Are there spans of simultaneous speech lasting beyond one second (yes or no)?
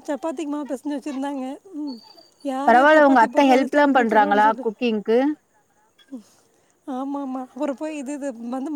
yes